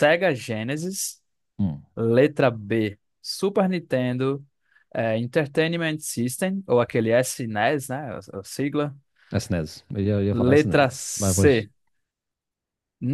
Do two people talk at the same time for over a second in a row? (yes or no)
yes